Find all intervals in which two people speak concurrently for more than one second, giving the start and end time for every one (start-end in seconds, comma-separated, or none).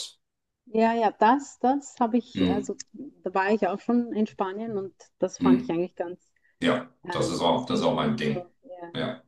7.0-8.5